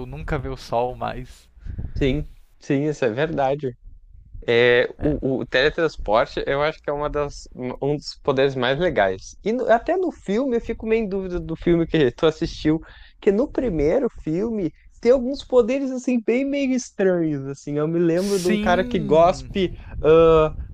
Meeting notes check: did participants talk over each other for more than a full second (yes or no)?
yes